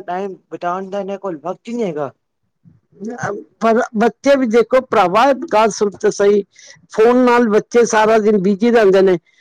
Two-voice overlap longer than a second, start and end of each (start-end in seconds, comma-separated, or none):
none